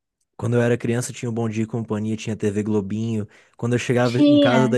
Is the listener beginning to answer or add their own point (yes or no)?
no